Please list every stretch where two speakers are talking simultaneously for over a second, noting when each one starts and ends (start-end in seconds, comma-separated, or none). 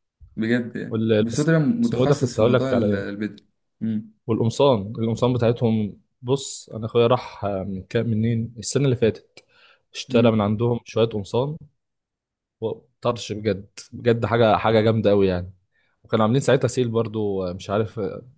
0.9-3.2